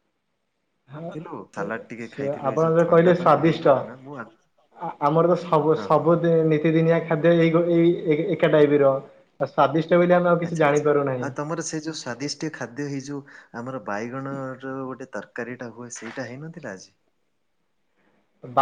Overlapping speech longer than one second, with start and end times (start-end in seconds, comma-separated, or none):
1.0-3.7